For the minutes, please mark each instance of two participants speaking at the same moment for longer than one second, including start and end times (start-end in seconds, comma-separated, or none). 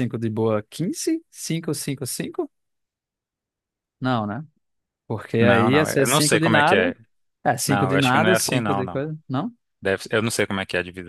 5.4-6.9, 7.7-9.0